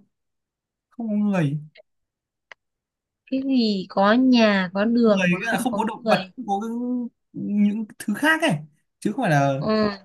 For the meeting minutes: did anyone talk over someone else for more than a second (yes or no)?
yes